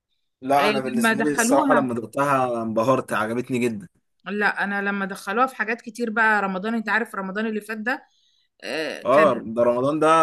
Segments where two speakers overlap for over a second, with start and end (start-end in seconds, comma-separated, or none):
0.6-1.9